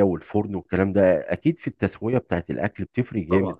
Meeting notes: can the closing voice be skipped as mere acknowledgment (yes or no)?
yes